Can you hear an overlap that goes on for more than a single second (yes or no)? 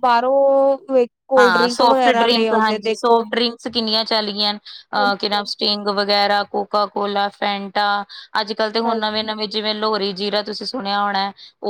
yes